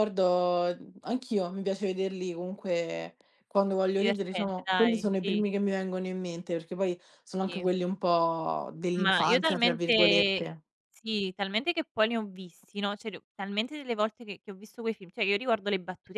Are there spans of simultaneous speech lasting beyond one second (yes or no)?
yes